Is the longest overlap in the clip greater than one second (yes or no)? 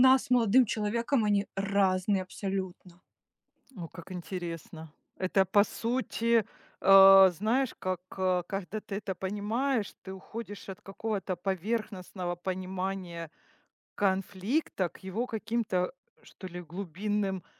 no